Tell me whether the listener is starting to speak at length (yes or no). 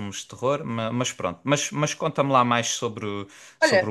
no